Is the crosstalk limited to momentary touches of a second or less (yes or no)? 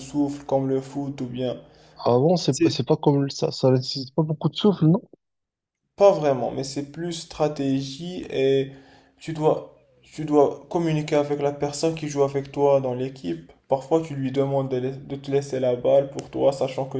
yes